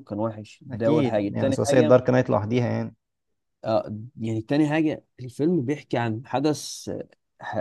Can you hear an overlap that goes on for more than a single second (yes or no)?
yes